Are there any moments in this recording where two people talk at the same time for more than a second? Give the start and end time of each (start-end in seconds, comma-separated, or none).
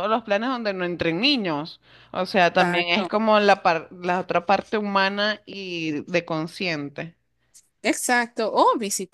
none